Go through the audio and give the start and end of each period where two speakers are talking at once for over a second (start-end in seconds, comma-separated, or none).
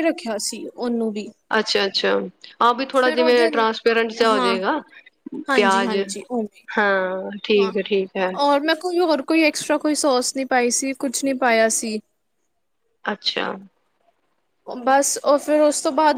none